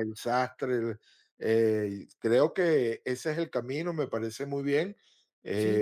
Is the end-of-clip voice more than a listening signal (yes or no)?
yes